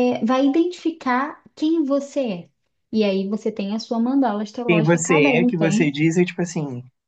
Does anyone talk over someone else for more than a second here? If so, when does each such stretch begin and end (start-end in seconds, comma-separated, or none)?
4.7-6.0